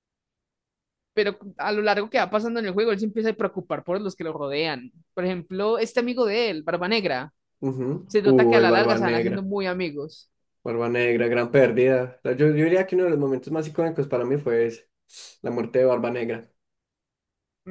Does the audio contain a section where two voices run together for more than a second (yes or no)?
yes